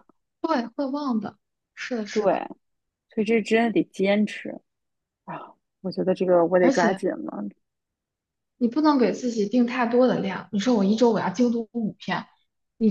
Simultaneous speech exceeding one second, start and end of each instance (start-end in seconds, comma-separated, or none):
none